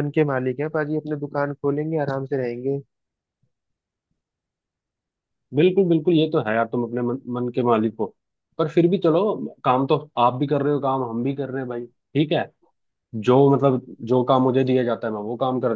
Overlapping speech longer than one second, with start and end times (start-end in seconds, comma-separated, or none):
none